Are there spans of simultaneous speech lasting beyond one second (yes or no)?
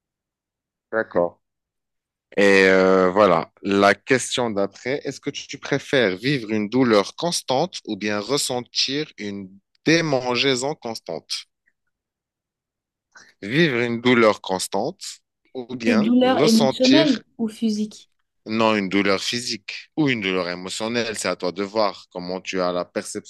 yes